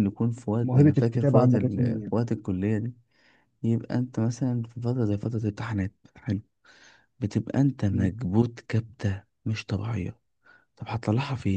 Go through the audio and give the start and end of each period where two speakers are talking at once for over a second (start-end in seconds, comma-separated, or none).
0.6-2.1